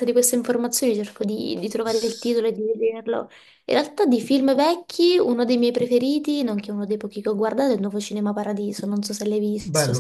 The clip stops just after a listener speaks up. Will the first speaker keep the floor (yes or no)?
no